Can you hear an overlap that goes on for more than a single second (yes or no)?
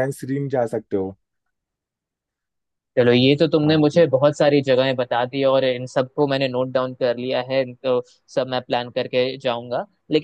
no